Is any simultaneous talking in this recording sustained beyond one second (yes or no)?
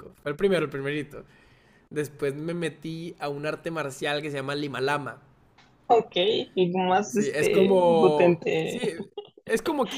yes